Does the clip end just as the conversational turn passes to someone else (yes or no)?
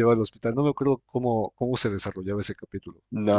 yes